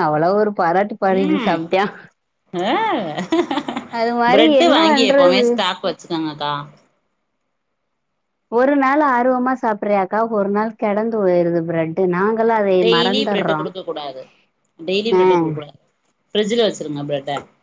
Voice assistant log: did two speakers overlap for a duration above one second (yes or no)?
no